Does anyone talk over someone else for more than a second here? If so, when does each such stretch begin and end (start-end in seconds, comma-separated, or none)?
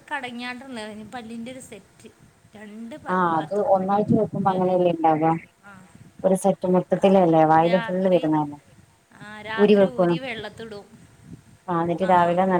none